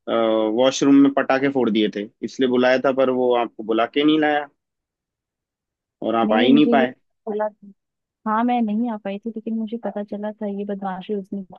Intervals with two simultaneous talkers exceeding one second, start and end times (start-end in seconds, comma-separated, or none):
none